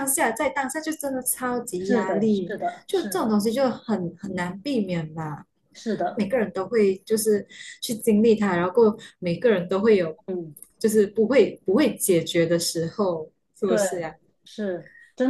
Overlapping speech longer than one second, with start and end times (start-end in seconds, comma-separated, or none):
1.8-3.4